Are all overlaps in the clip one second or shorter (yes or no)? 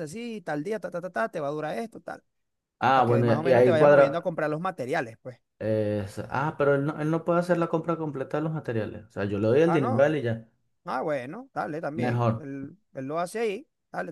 no